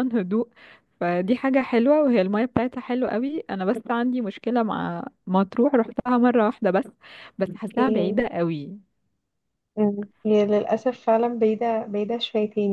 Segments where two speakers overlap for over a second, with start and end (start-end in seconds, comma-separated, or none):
none